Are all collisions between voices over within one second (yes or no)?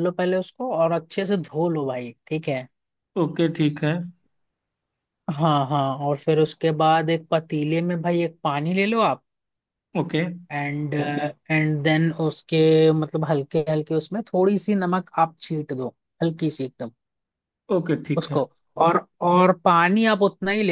yes